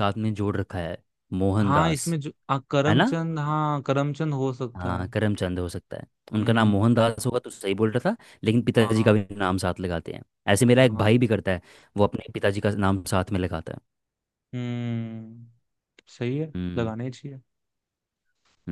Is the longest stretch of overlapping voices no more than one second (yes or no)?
yes